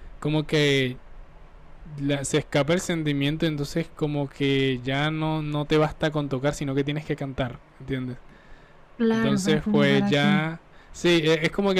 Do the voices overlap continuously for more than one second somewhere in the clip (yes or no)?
yes